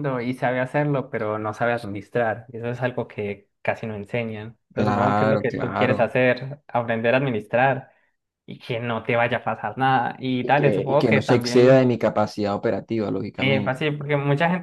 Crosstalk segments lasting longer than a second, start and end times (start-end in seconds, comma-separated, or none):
4.7-6.1, 10.4-11.9